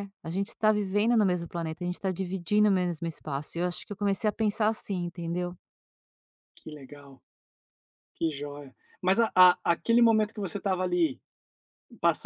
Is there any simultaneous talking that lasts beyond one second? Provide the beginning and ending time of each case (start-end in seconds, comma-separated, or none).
none